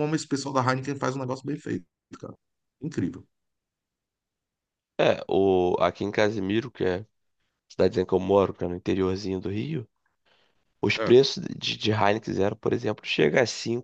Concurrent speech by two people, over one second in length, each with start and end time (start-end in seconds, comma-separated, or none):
none